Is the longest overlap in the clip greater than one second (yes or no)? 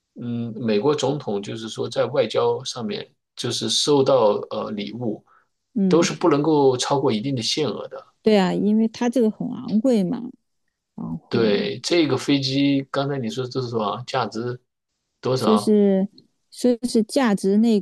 no